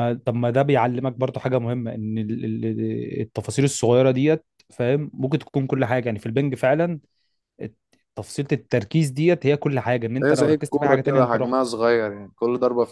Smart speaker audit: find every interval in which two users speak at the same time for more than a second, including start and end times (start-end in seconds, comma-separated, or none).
10.2-11.6